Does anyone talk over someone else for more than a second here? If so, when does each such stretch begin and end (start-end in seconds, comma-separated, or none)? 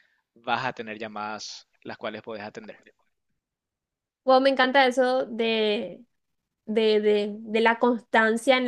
none